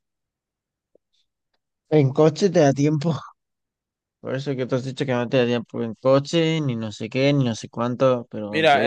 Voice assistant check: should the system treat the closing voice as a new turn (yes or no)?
yes